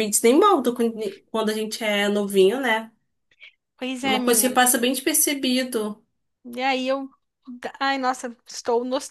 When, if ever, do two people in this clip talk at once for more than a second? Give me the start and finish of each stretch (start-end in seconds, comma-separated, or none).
none